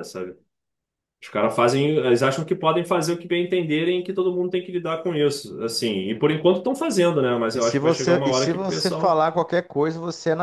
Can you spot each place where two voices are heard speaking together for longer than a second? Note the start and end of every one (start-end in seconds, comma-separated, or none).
7.5-9.2